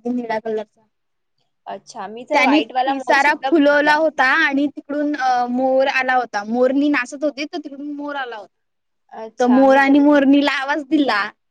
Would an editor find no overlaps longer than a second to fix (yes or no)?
no